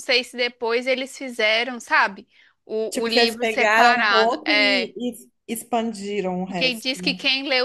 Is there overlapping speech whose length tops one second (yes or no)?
yes